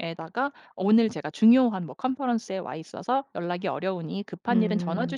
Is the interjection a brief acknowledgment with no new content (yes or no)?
yes